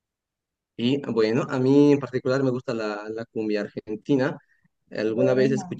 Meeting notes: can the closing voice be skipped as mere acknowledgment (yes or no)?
yes